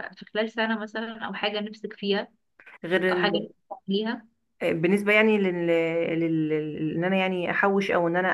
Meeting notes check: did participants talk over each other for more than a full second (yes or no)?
no